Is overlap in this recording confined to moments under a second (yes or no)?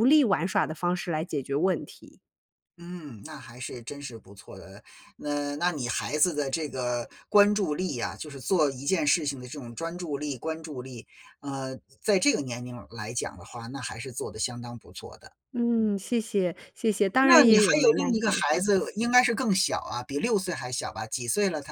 no